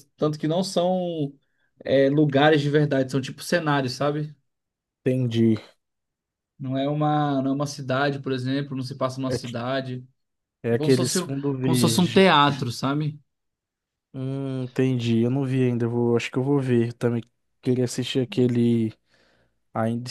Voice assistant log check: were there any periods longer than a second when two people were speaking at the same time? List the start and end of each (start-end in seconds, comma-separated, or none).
10.7-12.2